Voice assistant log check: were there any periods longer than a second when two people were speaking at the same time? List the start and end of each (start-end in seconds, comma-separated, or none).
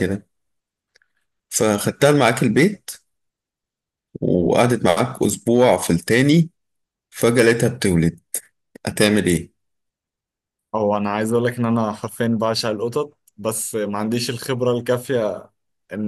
none